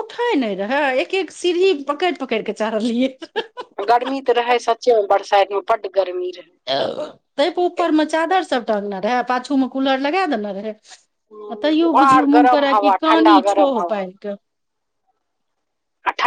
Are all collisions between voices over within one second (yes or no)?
no